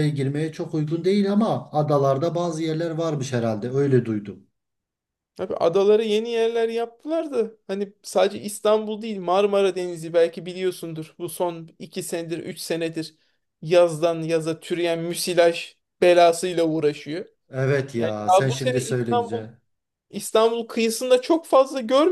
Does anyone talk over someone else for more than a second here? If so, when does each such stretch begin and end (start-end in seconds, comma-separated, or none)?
18.0-19.4